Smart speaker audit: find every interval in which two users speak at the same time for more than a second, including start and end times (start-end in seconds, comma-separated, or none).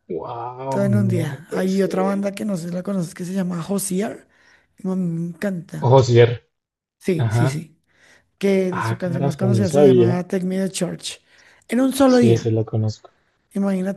0.7-2.3, 8.7-10.2